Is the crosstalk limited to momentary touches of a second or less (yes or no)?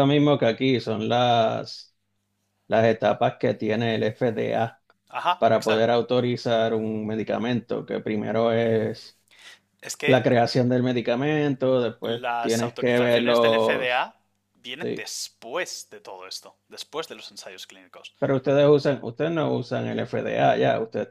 no